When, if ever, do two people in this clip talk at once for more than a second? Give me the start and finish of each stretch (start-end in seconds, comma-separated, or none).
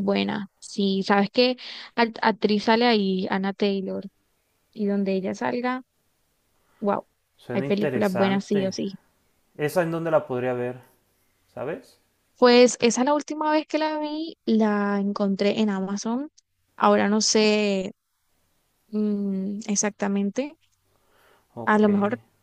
7.5-8.8